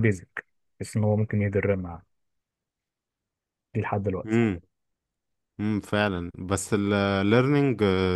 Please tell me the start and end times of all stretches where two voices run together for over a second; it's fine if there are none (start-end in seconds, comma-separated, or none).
none